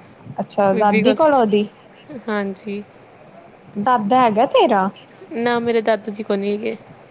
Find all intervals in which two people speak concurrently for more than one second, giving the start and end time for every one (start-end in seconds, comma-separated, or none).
none